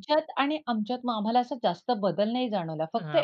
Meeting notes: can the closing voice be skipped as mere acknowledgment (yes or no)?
no